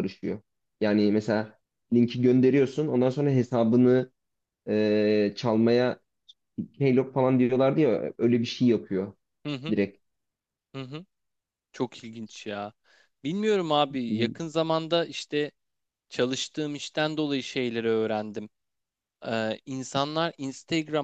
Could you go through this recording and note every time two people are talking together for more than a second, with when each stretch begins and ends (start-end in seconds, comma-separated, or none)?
none